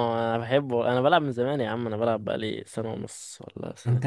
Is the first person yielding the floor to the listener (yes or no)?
yes